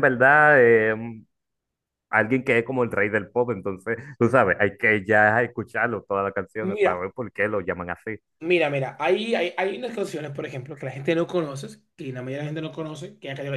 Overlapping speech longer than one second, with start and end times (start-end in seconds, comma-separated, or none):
none